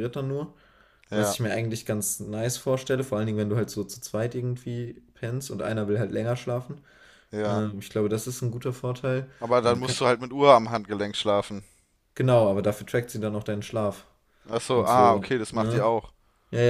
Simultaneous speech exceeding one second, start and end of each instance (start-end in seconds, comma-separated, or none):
14.7-15.9